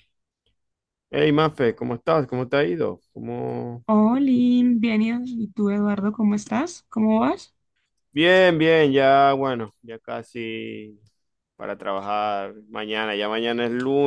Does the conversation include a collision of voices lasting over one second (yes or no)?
no